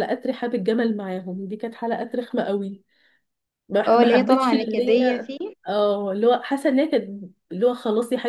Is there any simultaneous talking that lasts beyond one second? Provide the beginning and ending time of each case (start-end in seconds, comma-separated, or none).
3.9-5.3